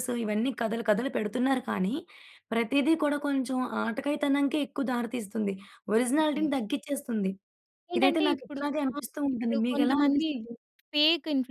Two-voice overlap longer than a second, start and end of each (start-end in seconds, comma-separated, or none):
8.0-10.3